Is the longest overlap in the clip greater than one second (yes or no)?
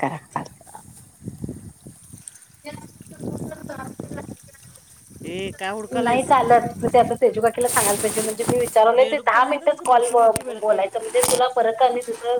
yes